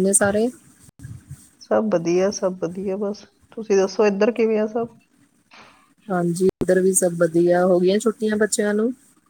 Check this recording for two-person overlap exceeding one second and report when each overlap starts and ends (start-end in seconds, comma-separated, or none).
none